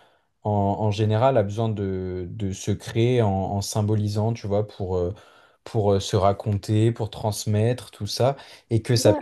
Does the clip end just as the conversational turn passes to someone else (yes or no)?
no